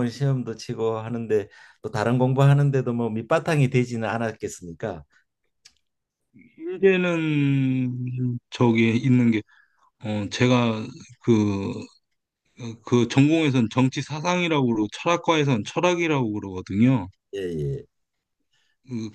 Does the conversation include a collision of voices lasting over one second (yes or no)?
no